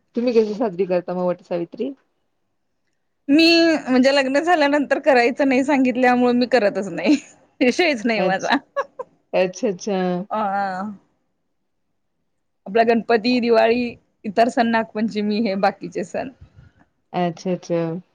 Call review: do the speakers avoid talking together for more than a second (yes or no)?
yes